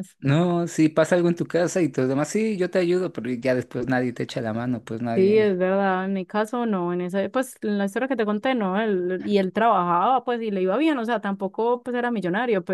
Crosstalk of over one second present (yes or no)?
no